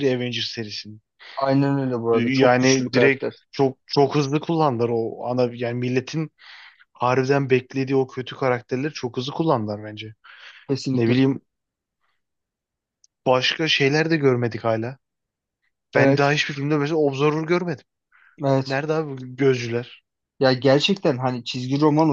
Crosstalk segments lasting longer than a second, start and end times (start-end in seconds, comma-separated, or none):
2.1-3.3